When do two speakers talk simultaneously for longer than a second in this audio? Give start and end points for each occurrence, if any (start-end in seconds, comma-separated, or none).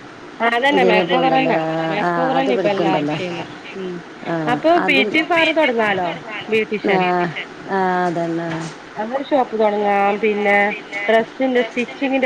0.8-3.2